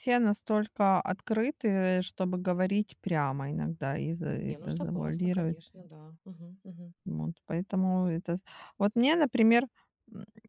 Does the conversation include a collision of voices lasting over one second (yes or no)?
no